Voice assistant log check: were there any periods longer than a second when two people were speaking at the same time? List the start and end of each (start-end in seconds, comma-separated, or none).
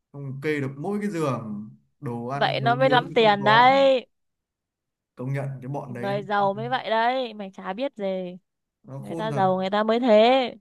2.3-3.8